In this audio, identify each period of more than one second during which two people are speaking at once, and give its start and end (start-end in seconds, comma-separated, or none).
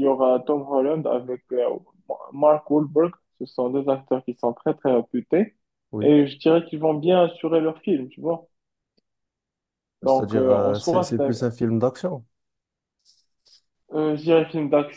10.0-11.3